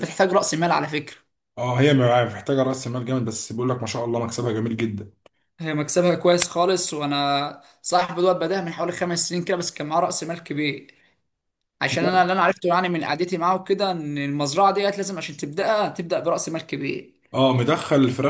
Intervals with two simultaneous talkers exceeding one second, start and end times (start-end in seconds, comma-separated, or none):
none